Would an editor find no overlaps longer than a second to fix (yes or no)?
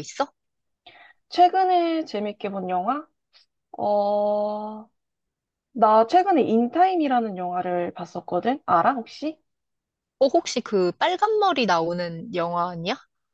yes